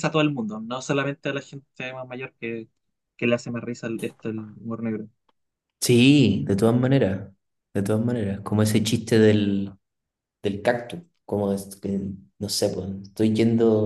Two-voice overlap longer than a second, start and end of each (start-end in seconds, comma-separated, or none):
none